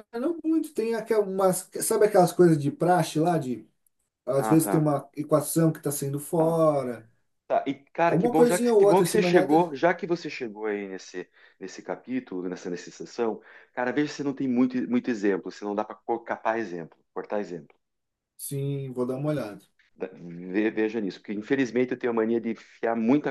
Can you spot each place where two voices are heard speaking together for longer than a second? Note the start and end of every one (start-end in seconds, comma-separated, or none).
8.1-9.7